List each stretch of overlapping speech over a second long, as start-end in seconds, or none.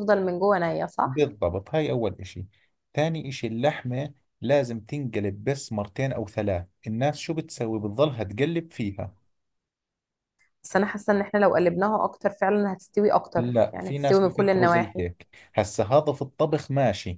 13.3-15.1